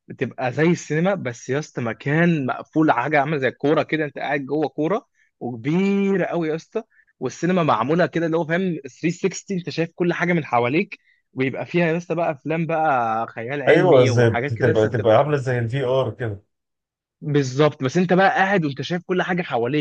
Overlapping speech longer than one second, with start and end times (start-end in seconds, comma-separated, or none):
13.7-15.3